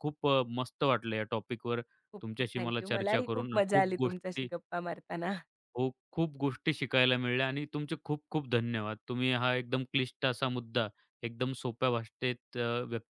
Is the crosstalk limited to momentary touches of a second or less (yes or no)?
no